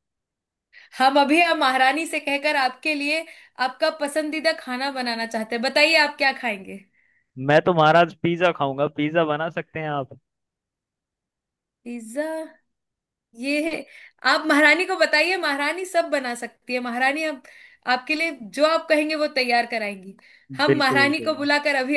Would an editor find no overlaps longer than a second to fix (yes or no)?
yes